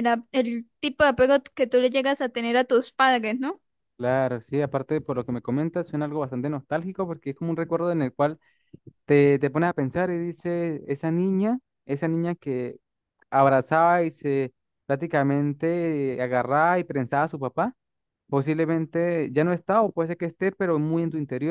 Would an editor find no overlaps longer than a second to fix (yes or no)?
yes